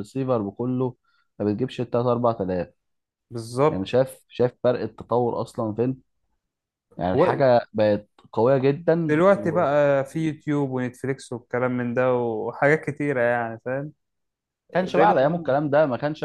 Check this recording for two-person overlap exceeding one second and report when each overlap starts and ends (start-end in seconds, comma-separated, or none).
none